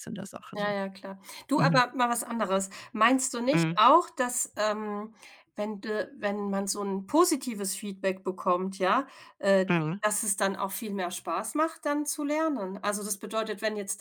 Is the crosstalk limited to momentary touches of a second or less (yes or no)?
yes